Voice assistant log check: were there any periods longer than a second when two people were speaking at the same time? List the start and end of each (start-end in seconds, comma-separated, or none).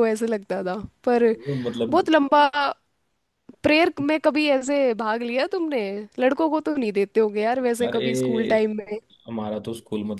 none